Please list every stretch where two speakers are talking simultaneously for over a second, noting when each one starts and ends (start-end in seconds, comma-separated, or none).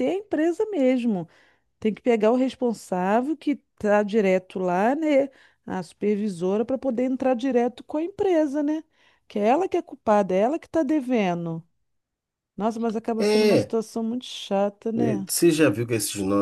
none